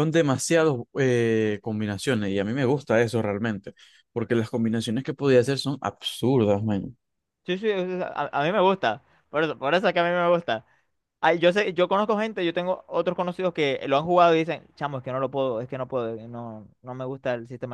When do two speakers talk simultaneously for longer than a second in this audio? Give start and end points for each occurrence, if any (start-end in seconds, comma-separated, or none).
none